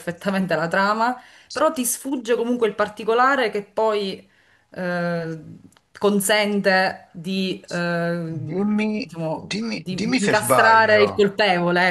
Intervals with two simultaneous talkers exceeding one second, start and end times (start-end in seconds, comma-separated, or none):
9.5-11.1